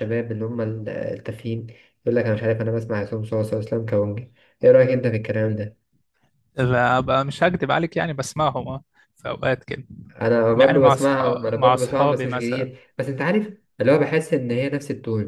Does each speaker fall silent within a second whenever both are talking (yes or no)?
no